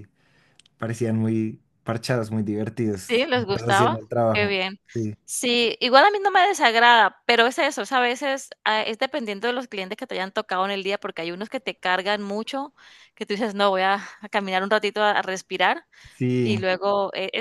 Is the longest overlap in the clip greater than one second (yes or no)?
yes